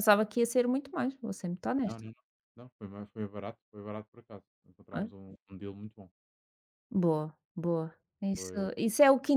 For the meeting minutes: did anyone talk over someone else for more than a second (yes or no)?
no